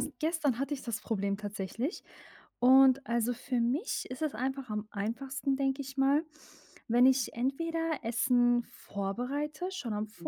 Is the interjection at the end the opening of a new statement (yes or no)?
no